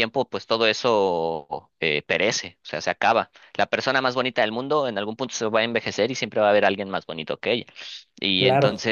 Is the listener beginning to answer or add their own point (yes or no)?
no